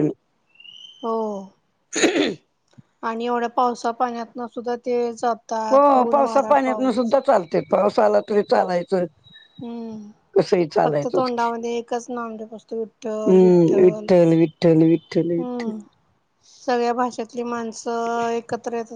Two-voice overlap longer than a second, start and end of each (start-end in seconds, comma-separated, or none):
none